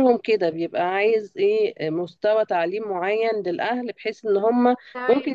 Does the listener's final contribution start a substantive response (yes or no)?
yes